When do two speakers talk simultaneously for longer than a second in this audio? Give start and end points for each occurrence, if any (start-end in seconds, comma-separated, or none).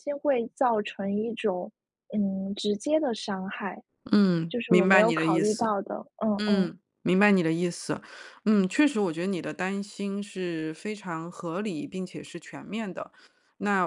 4.5-5.7